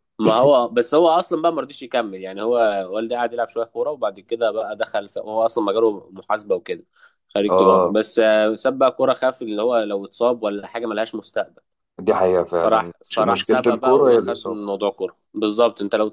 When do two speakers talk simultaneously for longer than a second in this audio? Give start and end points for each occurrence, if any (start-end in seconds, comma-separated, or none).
12.6-14.6